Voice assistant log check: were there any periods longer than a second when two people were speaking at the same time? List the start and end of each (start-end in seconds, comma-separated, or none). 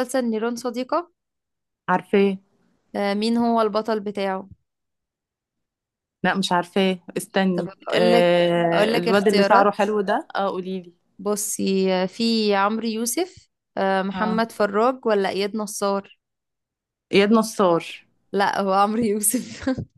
7.5-9.8